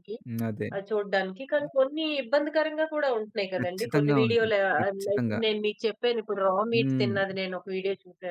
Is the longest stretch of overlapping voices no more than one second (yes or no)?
no